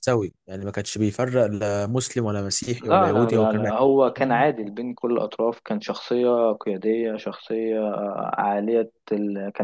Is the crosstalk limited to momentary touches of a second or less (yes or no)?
no